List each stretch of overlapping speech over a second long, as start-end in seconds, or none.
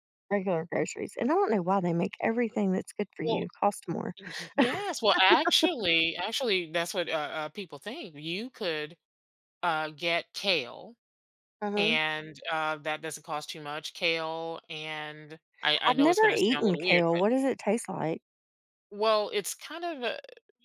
15.9-17.2